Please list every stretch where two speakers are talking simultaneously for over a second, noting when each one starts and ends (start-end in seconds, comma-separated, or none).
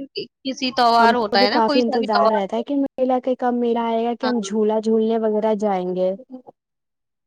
1.0-2.6